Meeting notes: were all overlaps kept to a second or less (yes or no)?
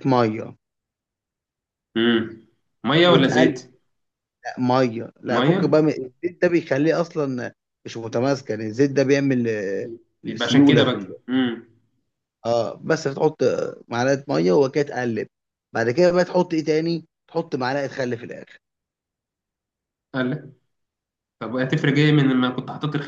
yes